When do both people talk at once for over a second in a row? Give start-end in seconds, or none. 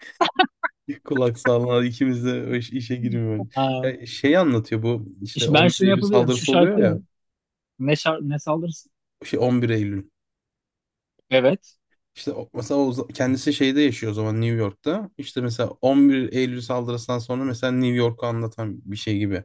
5.3-7.0